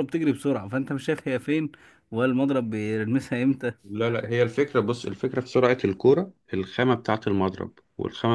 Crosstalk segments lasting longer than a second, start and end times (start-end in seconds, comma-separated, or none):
none